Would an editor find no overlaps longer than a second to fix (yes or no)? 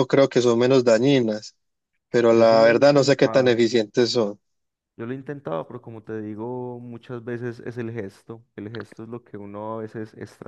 no